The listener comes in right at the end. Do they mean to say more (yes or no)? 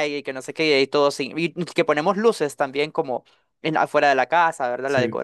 no